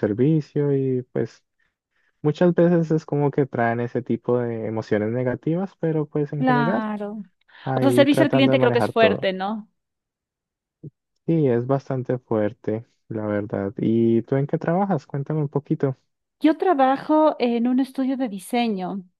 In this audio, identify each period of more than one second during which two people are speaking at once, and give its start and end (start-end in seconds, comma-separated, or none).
7.8-9.3